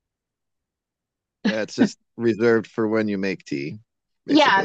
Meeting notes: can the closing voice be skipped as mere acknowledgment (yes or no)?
no